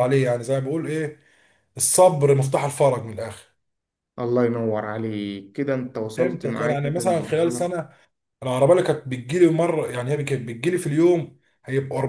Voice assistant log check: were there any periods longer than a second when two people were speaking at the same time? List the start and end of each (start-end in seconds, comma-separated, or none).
6.2-7.7